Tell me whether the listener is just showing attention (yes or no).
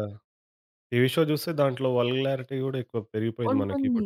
no